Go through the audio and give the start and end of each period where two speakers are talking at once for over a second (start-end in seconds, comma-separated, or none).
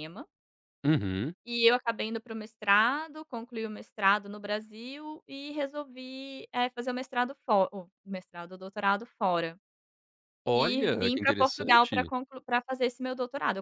10.5-12.1